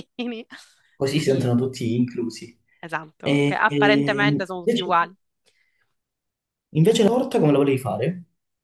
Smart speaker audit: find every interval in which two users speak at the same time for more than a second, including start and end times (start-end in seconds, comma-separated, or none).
3.2-4.9